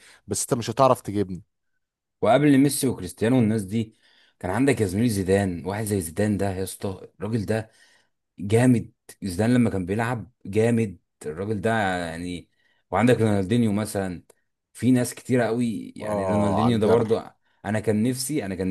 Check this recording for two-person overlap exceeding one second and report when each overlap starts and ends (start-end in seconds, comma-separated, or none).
16.0-17.2